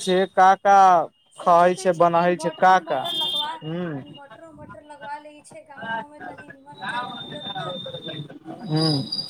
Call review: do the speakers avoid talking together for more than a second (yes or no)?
no